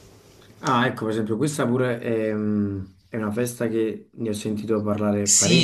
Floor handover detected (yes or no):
yes